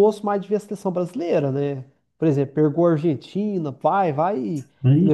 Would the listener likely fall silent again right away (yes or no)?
yes